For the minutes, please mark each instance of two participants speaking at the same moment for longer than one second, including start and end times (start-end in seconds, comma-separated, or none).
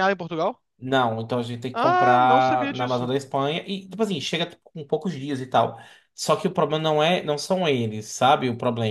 1.7-3.1